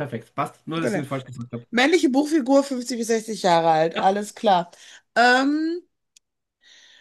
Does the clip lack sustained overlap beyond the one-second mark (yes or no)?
yes